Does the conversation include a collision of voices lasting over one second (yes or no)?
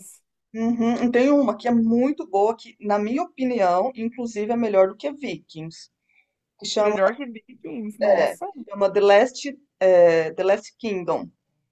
no